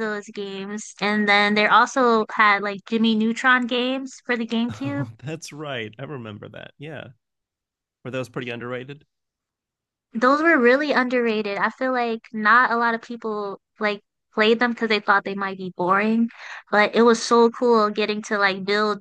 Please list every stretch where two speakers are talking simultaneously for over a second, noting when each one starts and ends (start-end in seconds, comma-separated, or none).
none